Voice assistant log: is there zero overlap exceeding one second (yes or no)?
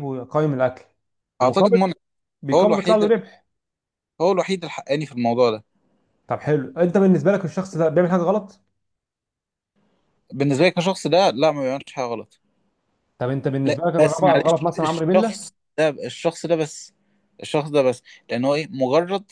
no